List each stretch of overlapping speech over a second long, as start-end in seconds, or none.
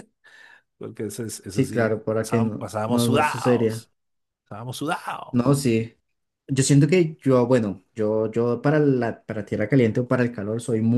1.5-3.9